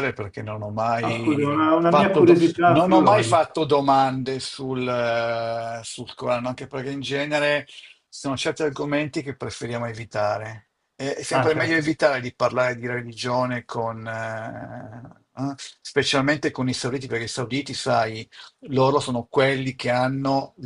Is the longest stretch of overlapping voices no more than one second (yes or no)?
no